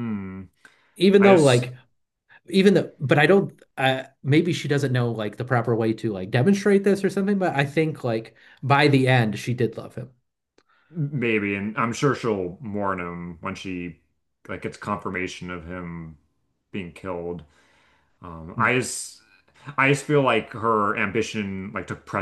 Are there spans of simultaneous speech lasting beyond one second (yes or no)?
no